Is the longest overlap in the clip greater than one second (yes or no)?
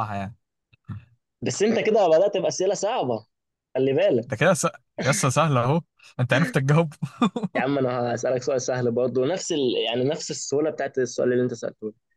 no